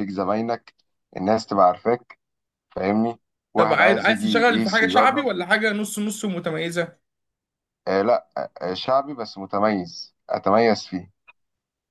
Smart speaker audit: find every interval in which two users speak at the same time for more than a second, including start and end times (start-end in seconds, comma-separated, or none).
3.6-5.3